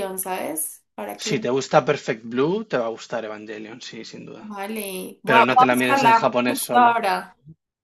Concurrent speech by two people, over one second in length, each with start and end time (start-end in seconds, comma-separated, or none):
5.3-6.9